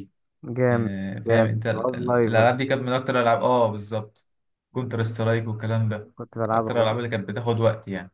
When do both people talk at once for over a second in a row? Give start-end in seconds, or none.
1.2-2.8